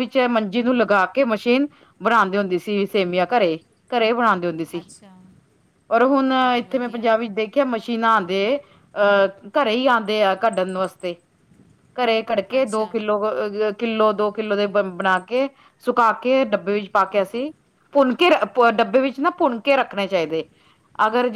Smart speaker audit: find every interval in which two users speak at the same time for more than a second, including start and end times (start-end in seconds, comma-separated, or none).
none